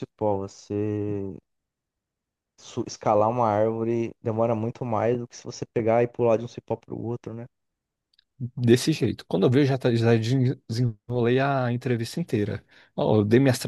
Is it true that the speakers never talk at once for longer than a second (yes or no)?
yes